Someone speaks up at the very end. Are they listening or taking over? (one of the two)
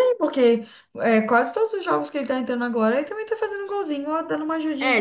taking over